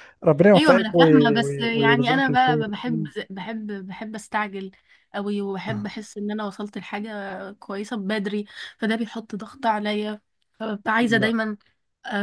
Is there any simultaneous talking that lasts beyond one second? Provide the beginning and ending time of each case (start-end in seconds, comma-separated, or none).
0.5-3.1